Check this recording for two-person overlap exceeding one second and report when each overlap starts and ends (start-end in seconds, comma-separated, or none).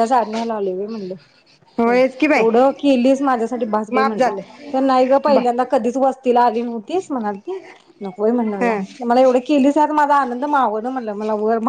none